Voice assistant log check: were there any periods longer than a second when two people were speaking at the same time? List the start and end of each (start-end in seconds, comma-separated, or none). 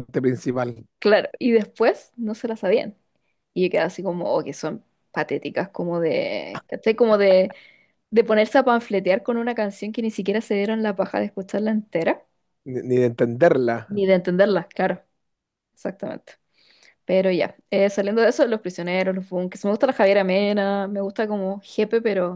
none